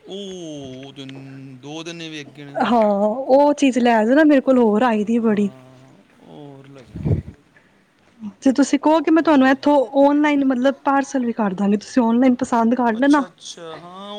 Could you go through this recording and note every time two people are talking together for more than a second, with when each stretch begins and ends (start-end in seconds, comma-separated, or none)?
none